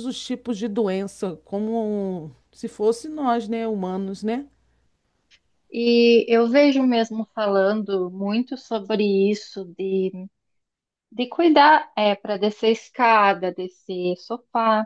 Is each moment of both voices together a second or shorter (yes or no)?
yes